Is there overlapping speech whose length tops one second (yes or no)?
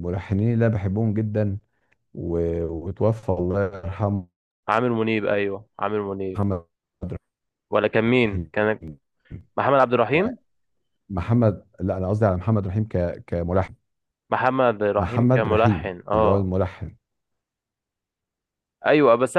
yes